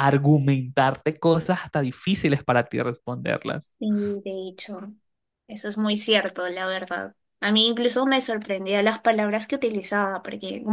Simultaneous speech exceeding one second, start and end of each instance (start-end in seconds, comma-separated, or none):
none